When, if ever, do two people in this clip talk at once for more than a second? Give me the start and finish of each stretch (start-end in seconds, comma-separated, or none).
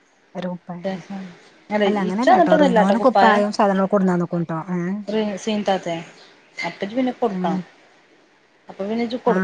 2.0-3.4